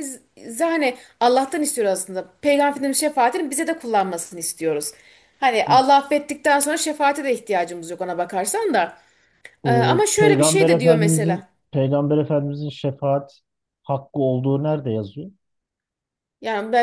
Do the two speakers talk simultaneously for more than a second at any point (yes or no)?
yes